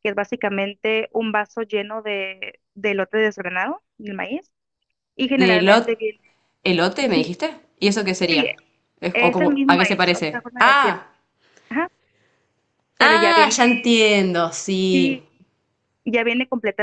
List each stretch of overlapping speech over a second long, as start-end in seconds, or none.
9.1-11.0